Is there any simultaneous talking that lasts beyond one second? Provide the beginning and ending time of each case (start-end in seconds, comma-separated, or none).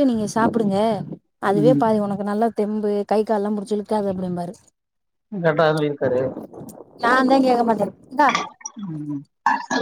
none